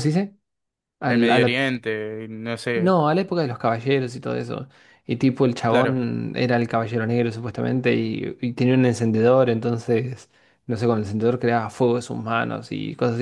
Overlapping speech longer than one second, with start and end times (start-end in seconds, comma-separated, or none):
none